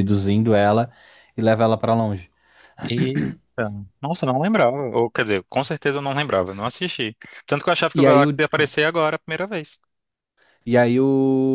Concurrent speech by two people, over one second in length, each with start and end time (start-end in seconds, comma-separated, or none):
none